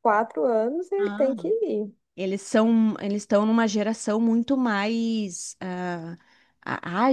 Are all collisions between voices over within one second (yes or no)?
yes